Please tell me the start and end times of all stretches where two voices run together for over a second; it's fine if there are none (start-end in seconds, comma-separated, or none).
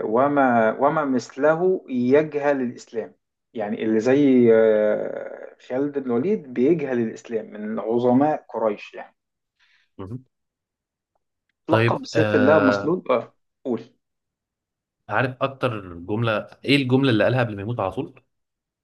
11.7-13.0